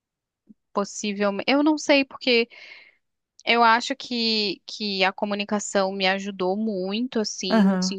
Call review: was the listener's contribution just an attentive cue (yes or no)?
yes